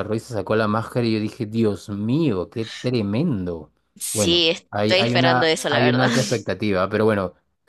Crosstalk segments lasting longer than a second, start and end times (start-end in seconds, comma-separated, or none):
4.1-6.1